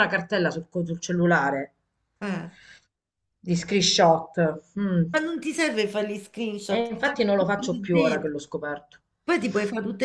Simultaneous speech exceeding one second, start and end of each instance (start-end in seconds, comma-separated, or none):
6.7-8.3